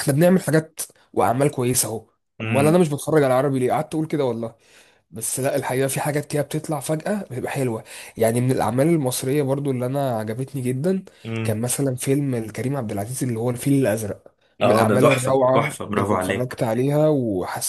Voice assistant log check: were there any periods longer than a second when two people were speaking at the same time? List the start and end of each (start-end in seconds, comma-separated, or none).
14.6-16.6